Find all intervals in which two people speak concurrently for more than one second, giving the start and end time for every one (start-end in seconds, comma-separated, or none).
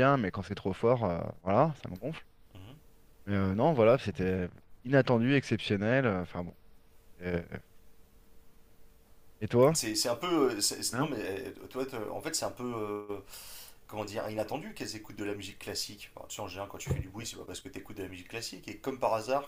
none